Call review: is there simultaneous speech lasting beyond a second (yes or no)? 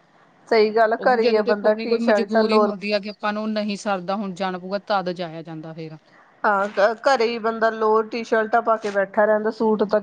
yes